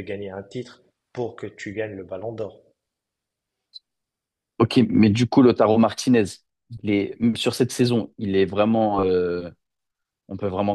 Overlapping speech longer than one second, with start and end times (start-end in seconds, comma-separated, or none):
none